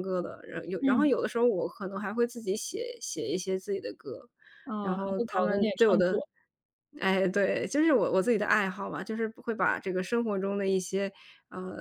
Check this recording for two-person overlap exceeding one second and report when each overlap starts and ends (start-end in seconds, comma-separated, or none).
4.8-6.2